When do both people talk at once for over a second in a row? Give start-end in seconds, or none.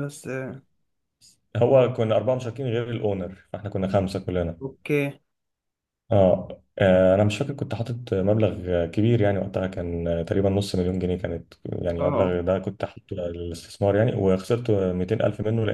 none